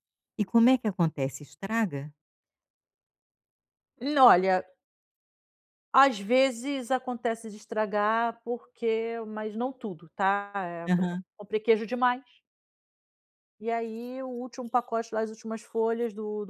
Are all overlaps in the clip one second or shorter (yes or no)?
yes